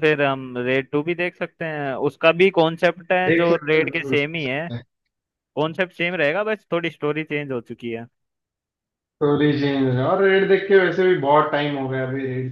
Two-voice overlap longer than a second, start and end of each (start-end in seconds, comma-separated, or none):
3.3-4.7